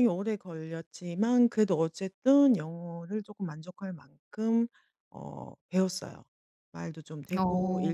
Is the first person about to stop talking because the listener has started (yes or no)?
no